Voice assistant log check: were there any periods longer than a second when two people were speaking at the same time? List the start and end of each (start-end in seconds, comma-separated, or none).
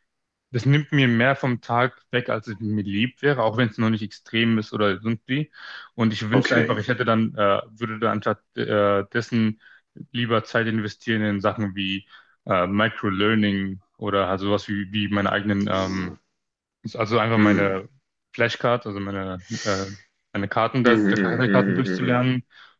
20.9-22.2